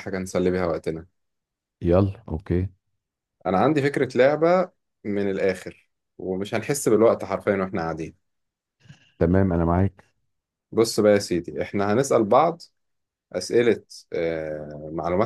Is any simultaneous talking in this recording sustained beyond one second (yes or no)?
no